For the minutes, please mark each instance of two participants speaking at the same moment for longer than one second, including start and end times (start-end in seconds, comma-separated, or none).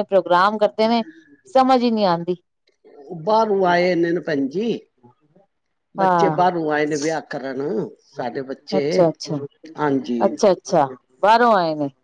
none